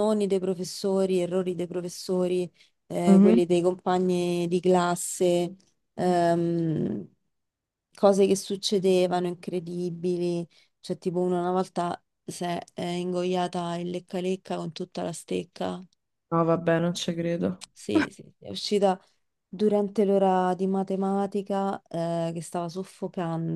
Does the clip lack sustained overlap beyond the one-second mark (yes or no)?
yes